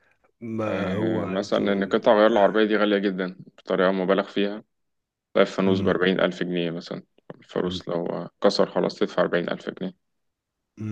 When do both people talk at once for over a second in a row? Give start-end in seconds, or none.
0.6-2.0